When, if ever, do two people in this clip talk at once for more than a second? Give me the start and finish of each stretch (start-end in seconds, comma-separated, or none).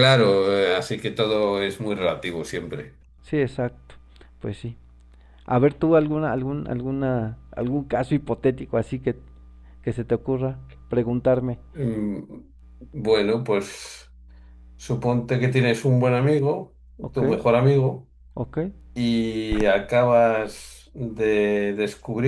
none